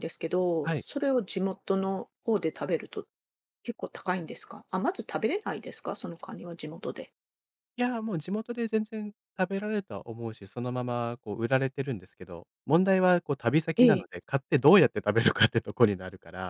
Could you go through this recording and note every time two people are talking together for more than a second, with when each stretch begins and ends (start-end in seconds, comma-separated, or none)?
none